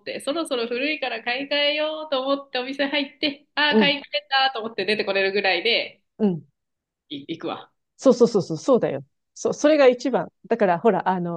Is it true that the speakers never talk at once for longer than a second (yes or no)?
yes